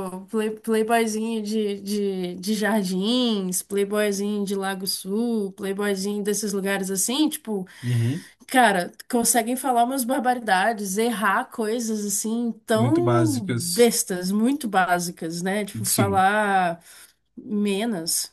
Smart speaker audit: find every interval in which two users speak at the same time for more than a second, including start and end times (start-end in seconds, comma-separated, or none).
12.7-13.9